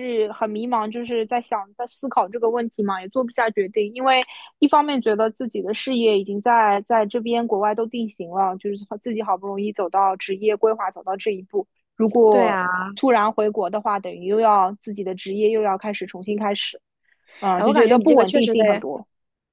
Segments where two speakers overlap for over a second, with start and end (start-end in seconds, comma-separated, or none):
17.6-18.8